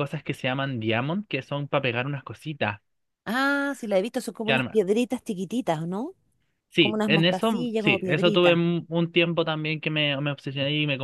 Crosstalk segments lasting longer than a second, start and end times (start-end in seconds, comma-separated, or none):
6.8-8.6